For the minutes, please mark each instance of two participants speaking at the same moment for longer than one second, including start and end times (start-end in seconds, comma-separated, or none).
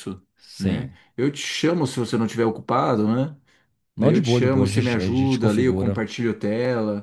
4.0-6.0